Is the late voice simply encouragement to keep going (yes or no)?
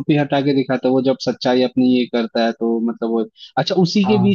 yes